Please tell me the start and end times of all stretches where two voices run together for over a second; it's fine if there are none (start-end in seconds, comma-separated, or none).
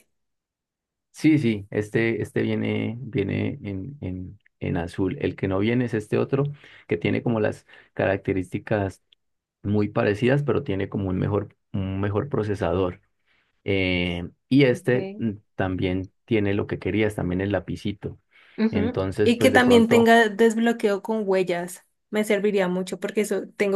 18.7-20.1